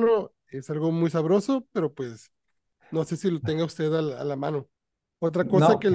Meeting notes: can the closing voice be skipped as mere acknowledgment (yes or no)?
yes